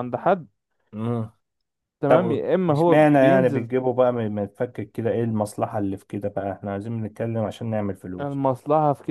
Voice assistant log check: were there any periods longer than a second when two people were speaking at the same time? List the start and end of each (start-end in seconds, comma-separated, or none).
2.1-3.7